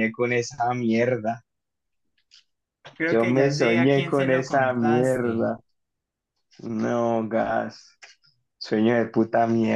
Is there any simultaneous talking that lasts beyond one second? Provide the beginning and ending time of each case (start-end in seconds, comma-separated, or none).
3.1-5.5